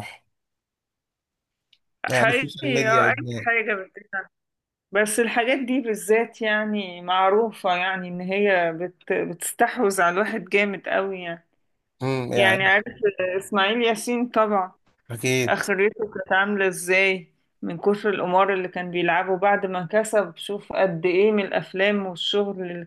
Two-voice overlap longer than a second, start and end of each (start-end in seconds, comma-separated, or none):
2.1-3.5